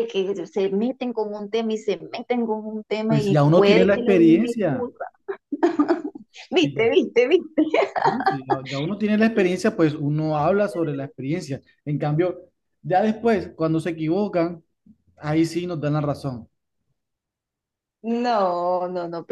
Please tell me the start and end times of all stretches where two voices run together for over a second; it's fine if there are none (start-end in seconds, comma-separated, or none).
3.1-4.9